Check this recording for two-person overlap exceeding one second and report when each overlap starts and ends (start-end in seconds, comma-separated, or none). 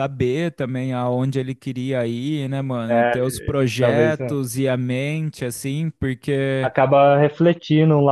none